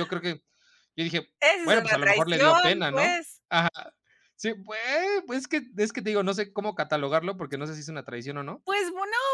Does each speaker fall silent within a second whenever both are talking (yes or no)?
no